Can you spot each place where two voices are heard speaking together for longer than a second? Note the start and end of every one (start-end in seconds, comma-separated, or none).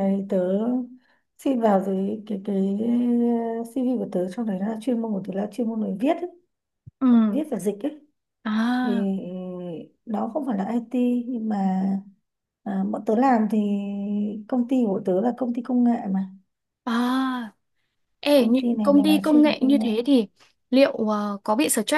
18.3-19.9